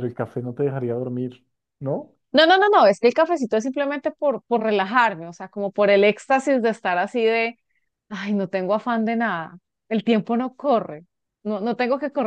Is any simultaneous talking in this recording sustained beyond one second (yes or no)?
no